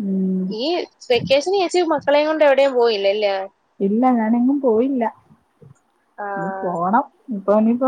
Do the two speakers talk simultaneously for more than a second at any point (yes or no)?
no